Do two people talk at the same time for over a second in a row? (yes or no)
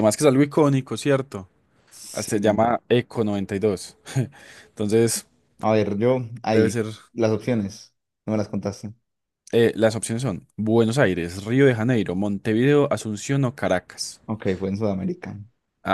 no